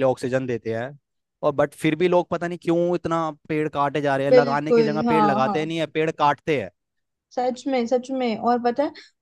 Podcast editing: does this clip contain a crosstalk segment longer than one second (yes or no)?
yes